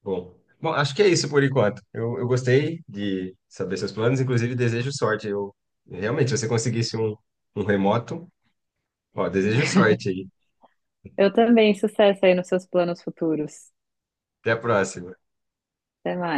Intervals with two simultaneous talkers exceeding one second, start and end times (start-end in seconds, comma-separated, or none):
none